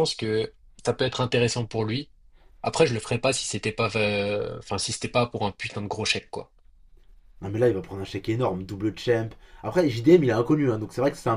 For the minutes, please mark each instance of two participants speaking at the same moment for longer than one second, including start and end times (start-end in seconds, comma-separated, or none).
none